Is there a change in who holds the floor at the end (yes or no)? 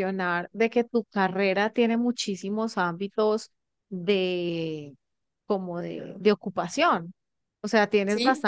no